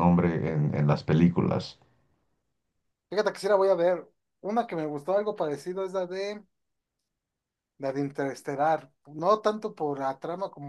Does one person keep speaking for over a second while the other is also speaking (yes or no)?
no